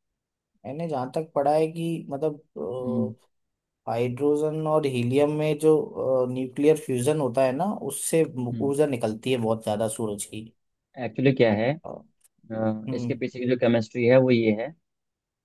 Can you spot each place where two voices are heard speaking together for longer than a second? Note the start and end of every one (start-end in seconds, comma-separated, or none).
none